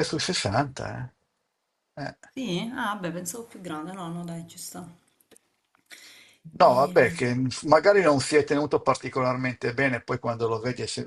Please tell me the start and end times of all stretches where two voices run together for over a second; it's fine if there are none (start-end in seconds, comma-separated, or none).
none